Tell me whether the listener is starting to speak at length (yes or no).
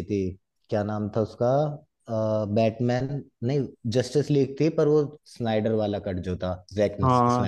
yes